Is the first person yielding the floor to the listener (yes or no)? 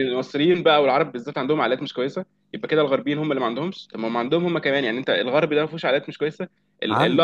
no